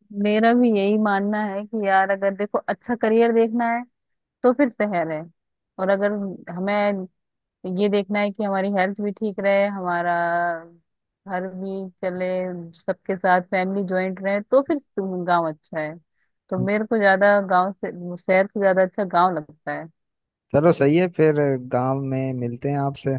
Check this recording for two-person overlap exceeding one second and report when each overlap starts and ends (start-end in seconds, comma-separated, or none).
none